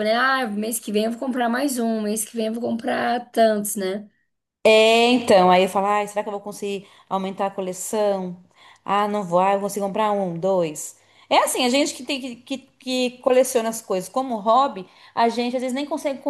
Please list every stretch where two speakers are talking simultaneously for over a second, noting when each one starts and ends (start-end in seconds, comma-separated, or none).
none